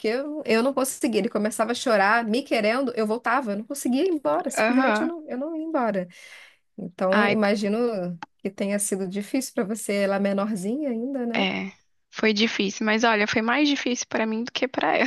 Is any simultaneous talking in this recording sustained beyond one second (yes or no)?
no